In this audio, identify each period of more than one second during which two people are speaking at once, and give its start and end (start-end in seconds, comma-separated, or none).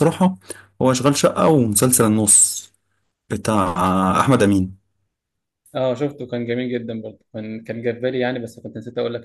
none